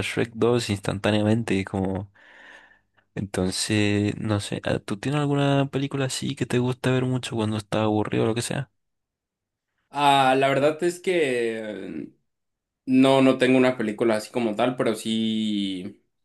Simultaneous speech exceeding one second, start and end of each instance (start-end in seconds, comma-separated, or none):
none